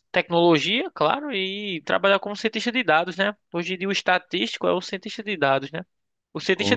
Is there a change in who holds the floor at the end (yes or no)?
no